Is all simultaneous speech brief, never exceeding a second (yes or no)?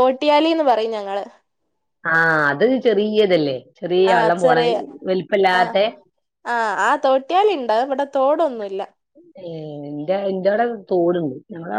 yes